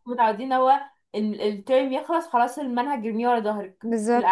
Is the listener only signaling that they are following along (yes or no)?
yes